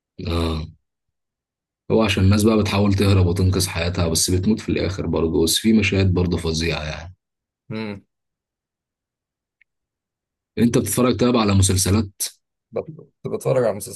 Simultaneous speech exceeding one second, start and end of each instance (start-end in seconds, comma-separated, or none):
none